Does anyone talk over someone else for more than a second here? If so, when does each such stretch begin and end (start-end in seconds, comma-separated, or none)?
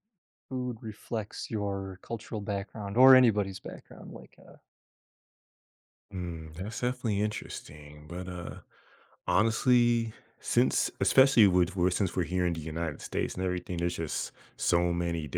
none